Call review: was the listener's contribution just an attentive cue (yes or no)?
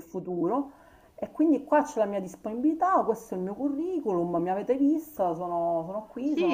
no